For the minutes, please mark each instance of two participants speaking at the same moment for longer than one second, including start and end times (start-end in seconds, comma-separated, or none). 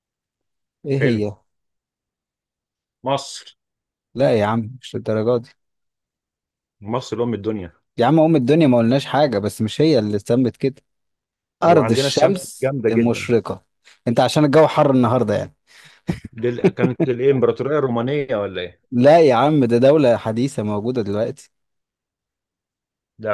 11.7-13.3